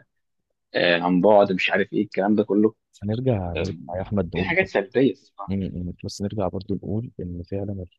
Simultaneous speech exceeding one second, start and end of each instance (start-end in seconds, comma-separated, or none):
none